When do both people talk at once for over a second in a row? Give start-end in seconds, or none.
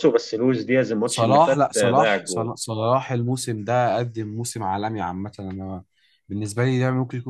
1.1-2.5